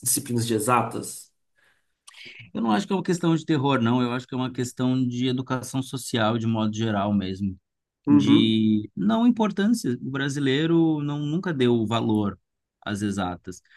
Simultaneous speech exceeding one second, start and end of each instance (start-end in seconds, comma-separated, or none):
none